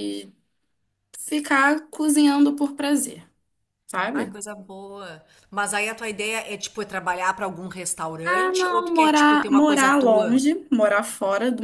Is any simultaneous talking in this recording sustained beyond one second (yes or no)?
yes